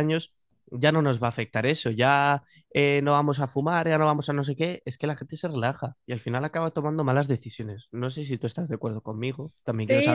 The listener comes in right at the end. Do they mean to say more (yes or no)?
yes